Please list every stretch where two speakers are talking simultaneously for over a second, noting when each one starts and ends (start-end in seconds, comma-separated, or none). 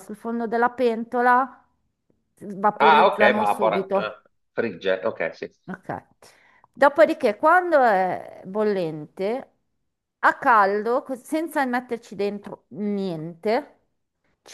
2.8-4.1